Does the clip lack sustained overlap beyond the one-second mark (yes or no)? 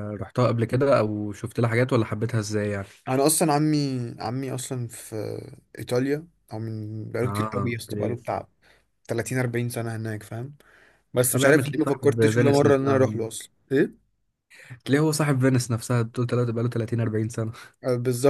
no